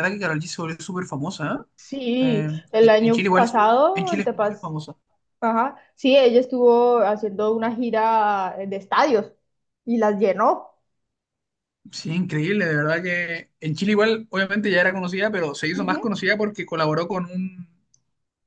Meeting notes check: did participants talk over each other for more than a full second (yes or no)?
yes